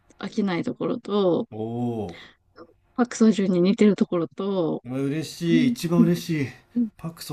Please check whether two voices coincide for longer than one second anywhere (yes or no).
no